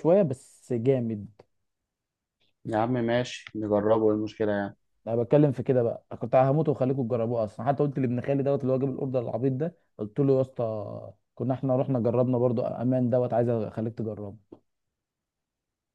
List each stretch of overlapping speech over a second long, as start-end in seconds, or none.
none